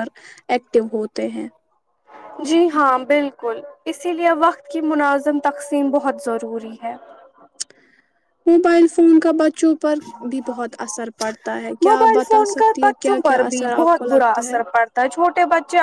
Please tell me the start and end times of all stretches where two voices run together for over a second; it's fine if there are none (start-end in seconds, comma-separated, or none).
11.9-14.6